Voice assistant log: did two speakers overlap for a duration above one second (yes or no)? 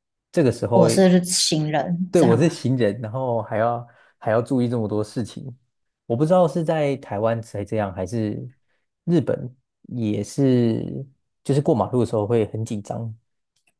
no